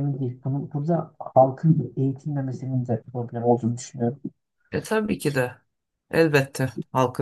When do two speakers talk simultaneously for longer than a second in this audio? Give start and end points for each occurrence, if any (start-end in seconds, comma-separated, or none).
none